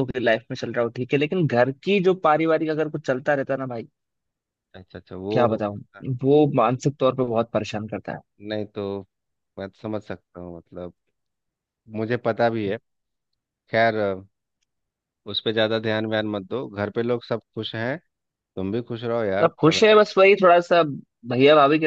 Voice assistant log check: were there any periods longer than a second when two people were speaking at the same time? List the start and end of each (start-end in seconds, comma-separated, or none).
none